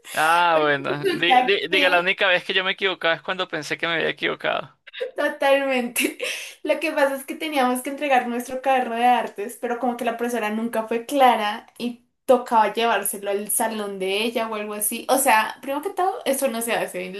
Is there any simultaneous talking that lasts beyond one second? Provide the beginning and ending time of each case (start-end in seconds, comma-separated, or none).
0.5-2.1